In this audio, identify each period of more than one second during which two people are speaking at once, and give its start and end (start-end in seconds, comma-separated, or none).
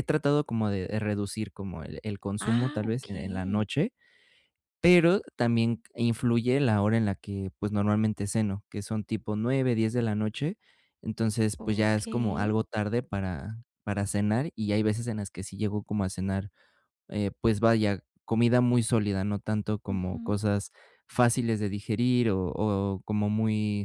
2.4-3.6